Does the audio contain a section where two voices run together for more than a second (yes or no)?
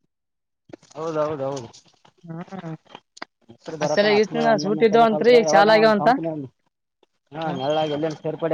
yes